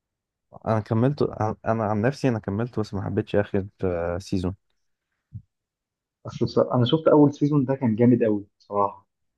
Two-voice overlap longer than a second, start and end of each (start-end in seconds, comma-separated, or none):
none